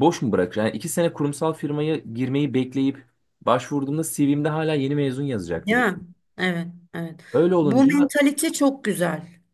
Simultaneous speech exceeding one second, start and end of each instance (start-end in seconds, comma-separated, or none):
none